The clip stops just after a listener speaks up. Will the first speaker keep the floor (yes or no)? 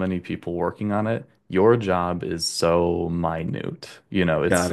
yes